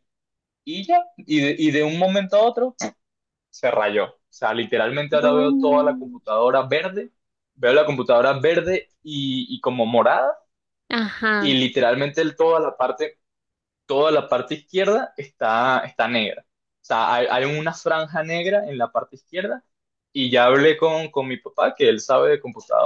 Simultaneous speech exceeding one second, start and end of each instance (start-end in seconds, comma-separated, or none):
5.1-6.3